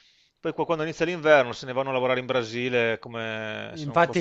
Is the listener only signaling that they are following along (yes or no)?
no